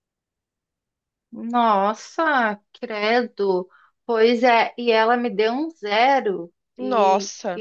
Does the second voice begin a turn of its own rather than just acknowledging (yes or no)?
no